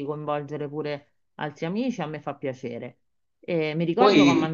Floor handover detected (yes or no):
no